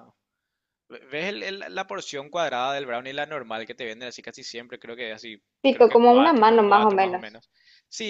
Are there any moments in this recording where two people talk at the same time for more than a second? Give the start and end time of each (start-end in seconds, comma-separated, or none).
5.6-7.4